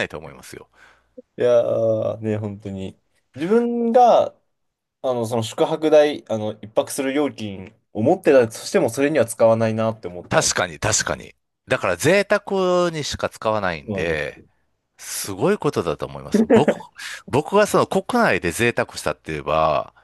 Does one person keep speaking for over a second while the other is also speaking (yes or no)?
no